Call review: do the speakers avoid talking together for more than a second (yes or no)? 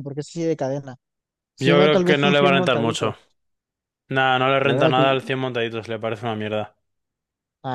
no